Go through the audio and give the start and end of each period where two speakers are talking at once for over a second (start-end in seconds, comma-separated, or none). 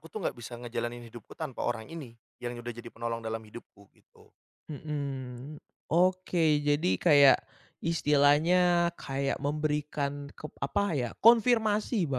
none